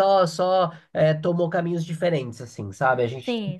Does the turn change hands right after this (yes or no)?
no